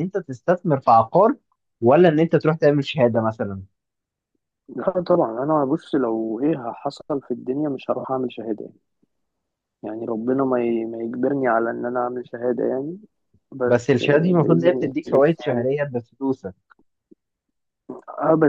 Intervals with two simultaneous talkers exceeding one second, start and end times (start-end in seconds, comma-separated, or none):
13.7-15.7